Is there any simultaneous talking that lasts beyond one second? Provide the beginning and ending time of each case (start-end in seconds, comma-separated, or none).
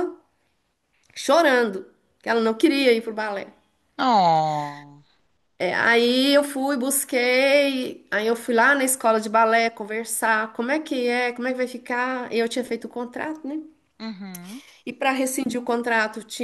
none